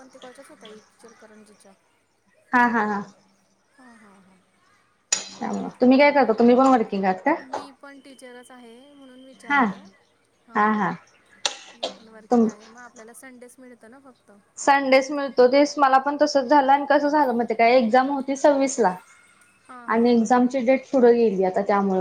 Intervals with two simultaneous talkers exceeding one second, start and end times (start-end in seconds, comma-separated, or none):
none